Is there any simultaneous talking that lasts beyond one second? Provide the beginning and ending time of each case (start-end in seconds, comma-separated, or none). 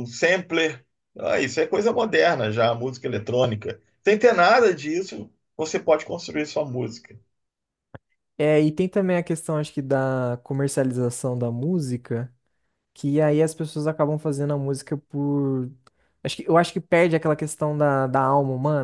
none